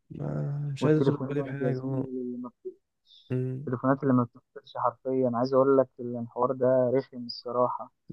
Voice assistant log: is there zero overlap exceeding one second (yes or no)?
no